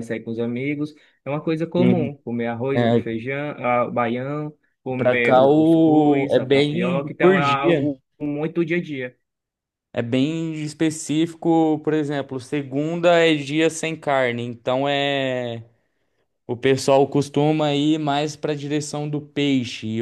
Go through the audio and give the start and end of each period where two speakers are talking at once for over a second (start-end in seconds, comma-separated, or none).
5.0-7.9